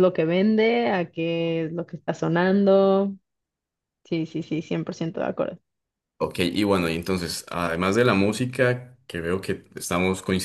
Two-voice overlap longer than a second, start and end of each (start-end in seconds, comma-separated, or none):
none